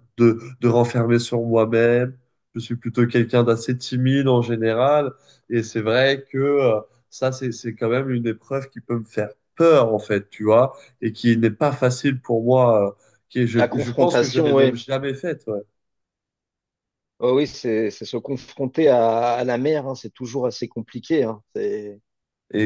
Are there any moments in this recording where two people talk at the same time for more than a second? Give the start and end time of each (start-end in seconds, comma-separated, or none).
13.6-14.8